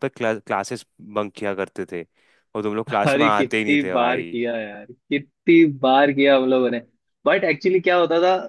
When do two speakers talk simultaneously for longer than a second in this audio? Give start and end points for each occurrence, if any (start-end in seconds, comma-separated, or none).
3.1-4.4